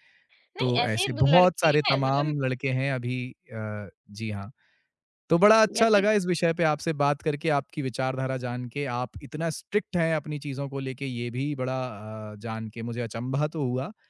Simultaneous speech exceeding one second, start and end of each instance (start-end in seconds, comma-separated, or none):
0.6-2.4